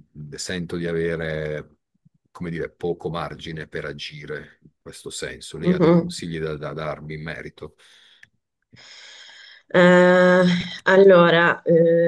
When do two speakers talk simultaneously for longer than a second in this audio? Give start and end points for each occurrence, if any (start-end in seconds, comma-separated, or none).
none